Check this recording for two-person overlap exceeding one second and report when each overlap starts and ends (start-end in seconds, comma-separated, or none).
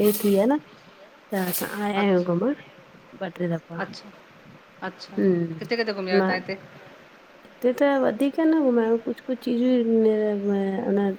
none